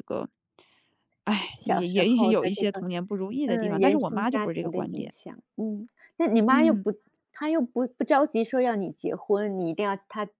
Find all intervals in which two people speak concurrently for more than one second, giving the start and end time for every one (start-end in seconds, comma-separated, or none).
1.6-2.8, 3.5-5.1